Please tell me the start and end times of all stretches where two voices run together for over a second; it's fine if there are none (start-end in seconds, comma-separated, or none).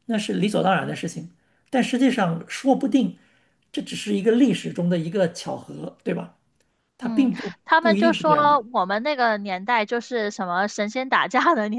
7.0-8.6